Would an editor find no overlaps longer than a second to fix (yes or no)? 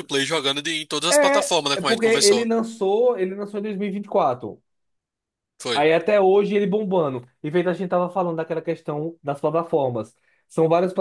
no